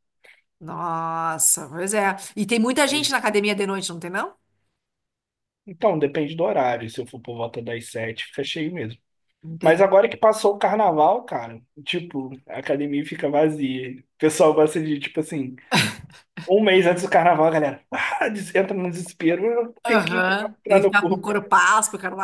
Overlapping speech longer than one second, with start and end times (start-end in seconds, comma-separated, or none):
19.9-21.3